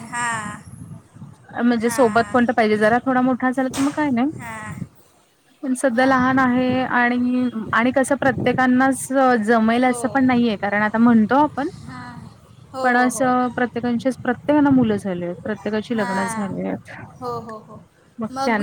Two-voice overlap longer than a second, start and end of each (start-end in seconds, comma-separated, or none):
none